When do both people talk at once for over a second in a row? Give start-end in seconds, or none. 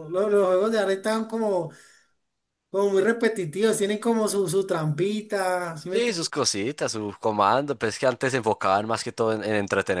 none